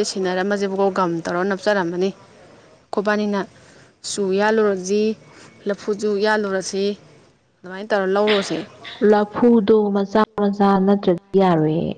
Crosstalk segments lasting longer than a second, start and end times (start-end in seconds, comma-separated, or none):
none